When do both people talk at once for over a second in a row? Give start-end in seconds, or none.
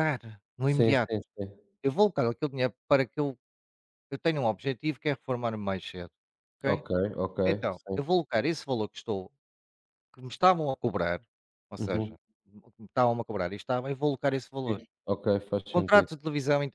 none